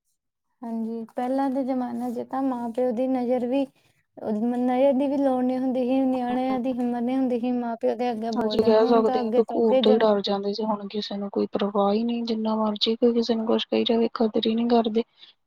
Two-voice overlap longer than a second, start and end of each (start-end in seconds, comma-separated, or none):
8.4-10.1